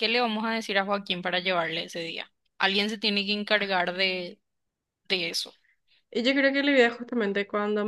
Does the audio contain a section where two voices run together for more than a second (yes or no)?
no